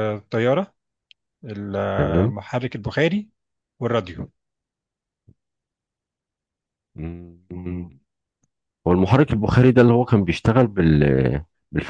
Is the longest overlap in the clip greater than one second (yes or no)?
no